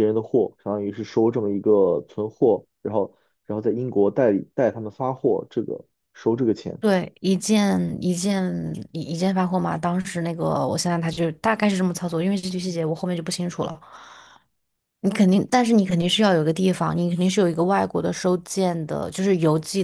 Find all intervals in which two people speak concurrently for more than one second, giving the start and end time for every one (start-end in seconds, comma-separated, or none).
none